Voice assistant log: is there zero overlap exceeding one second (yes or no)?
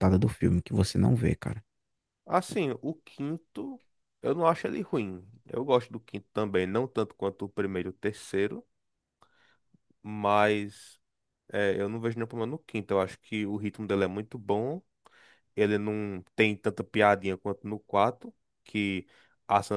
yes